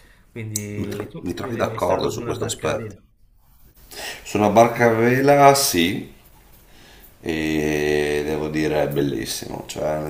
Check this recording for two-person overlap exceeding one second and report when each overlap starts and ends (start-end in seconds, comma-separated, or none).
0.8-3.0